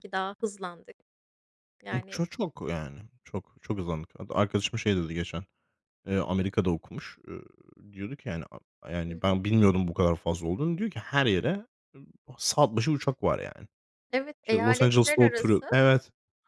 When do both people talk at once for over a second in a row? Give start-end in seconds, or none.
14.4-15.8